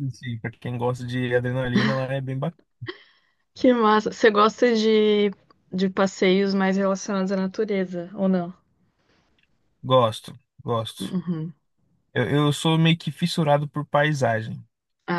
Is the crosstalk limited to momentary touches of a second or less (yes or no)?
yes